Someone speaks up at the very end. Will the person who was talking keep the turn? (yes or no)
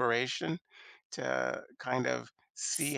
yes